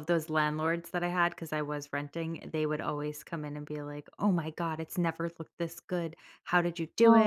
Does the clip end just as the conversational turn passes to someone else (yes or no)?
no